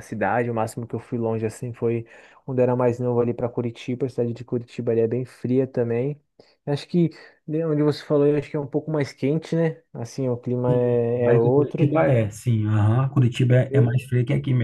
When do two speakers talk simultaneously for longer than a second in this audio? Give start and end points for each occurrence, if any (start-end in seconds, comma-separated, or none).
10.7-11.9